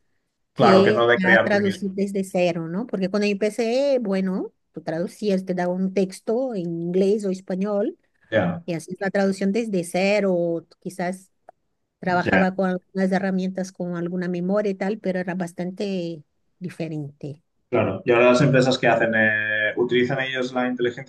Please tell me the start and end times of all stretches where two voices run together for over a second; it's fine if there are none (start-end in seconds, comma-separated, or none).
0.6-2.0